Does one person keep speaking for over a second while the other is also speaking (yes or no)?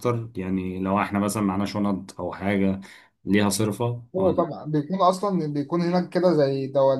no